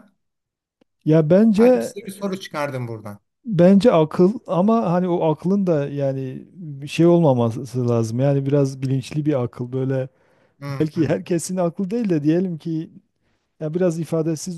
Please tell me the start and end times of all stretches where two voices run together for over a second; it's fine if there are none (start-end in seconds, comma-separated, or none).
none